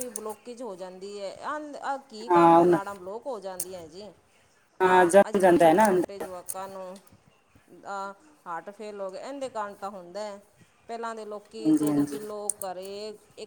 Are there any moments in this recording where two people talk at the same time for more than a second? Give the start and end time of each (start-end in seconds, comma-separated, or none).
4.8-6.2